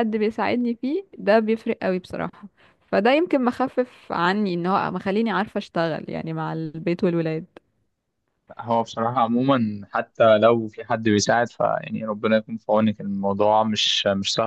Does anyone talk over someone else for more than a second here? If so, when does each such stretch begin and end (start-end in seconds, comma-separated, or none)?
none